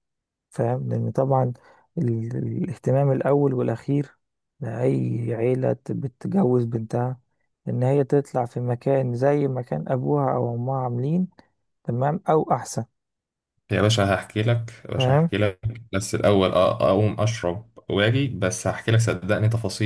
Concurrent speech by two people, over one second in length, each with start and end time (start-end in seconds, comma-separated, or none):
none